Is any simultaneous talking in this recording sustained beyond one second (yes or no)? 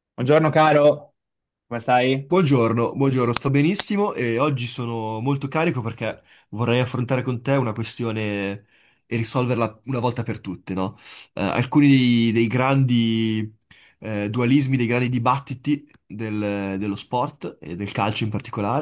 no